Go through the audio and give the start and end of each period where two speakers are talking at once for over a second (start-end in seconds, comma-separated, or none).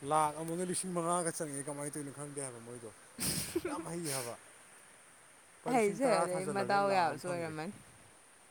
5.7-7.5